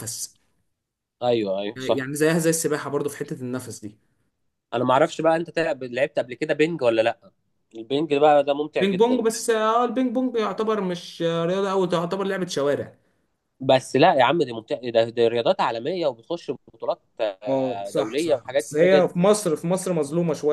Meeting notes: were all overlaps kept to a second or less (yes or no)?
no